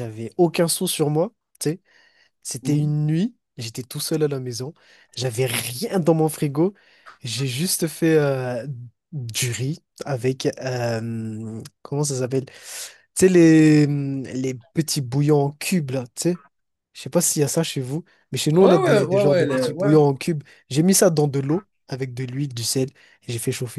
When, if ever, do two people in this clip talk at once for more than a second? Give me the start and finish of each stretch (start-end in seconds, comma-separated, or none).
18.6-19.9